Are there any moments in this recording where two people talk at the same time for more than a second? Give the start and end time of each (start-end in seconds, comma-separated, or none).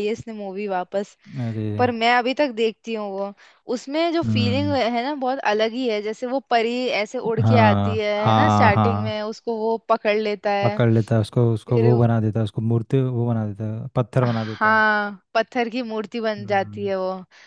7.4-9.2